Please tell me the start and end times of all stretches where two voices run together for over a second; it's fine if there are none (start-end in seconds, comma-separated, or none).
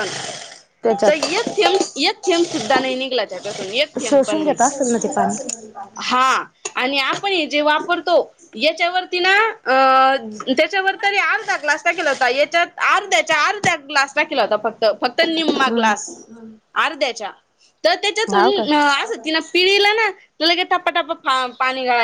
4.1-5.4